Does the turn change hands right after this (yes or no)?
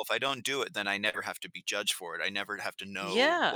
no